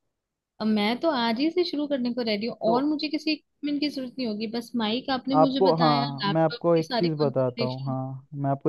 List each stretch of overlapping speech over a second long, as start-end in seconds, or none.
5.3-8.0